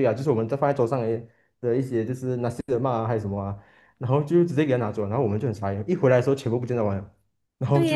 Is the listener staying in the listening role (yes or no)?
no